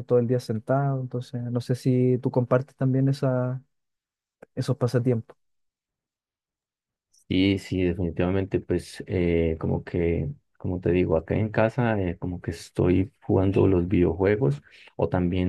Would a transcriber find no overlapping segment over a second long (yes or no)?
yes